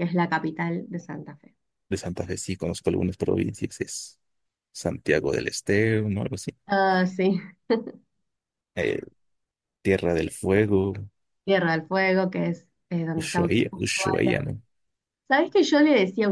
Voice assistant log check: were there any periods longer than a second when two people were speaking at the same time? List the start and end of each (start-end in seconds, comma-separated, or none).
13.2-14.4